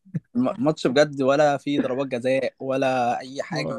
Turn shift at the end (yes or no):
yes